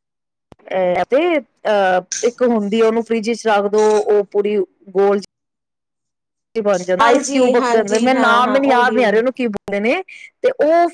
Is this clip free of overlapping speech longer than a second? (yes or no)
no